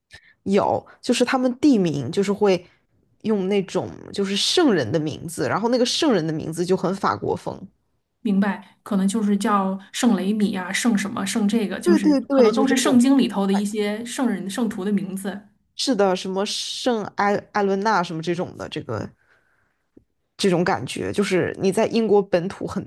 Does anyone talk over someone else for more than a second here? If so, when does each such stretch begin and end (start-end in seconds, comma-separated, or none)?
11.8-13.1